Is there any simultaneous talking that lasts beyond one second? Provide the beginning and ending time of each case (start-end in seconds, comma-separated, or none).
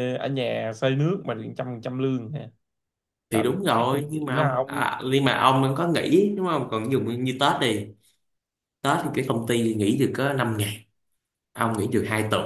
3.3-4.8